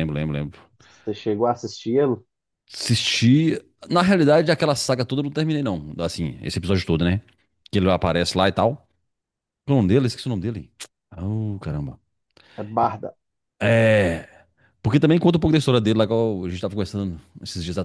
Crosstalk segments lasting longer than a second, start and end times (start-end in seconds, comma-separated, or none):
none